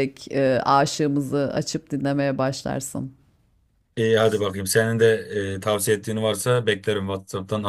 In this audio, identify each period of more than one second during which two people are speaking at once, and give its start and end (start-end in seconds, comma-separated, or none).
none